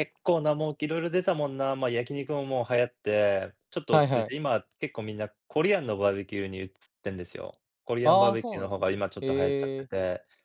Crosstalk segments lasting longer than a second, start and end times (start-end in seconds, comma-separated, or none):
8.0-9.9